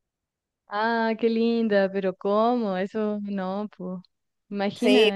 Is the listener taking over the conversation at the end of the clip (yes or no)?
yes